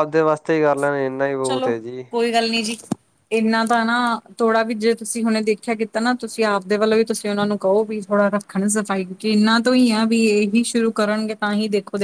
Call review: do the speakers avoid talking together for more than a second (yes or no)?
yes